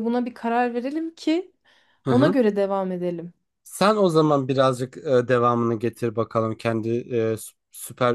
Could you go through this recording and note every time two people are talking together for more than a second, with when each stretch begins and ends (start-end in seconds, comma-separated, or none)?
none